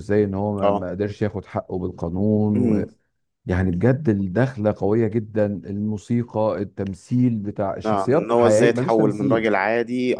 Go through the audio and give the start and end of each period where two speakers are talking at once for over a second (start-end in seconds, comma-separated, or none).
7.8-9.5